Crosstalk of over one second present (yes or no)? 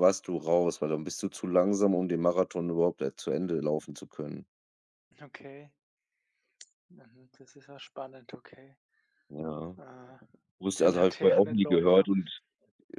yes